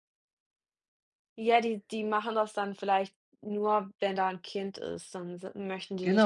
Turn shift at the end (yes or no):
yes